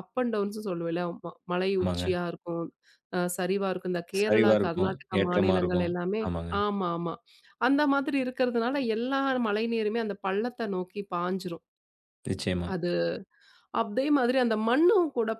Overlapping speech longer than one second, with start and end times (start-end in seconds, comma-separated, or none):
4.2-6.2